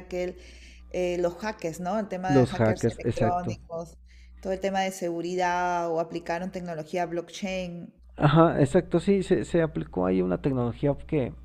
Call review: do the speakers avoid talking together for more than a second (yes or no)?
no